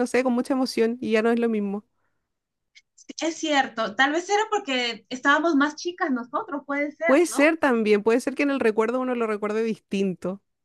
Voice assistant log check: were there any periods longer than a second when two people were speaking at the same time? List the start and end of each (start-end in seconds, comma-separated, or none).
none